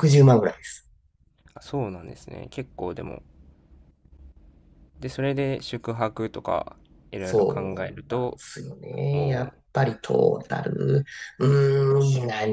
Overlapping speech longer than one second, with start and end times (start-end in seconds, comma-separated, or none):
7.2-8.4